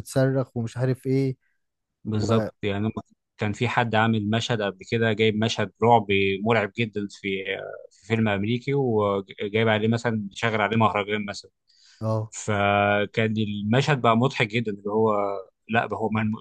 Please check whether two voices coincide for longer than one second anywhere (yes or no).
no